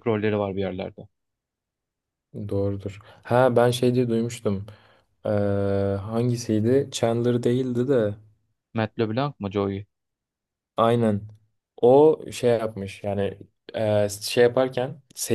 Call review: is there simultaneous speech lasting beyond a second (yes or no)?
no